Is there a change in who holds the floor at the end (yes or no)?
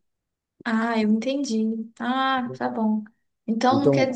no